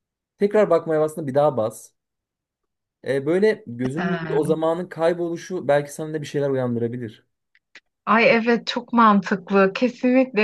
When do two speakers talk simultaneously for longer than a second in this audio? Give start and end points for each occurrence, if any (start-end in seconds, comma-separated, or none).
none